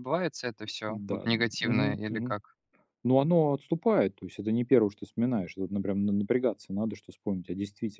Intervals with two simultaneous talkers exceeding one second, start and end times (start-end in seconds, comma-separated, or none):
0.9-2.4